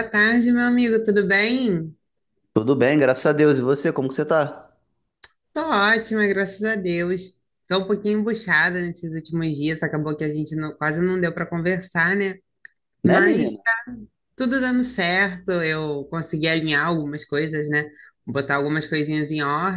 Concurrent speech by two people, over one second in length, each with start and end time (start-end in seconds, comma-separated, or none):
none